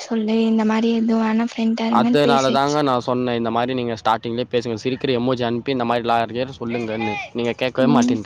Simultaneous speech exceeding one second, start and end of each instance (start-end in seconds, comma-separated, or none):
none